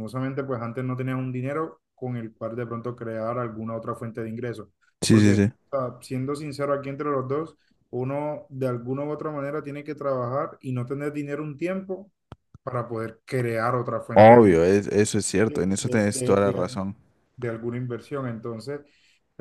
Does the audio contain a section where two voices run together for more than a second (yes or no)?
yes